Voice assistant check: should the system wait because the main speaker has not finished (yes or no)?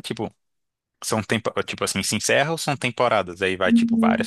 no